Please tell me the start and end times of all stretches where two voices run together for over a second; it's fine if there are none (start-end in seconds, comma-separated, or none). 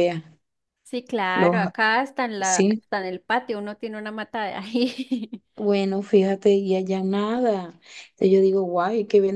none